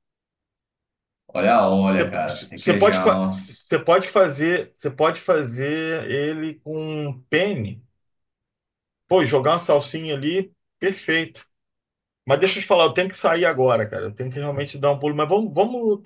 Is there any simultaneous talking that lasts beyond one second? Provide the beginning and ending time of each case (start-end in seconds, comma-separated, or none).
2.0-3.5